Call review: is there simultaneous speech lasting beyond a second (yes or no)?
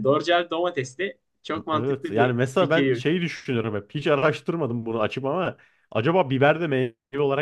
yes